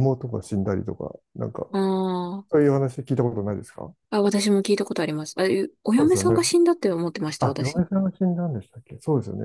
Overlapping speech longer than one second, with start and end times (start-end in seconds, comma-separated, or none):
none